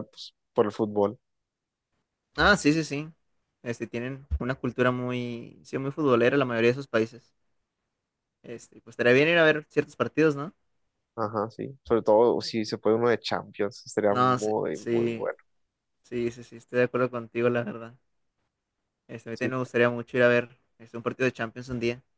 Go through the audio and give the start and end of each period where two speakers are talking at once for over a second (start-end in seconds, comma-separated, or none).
14.1-15.3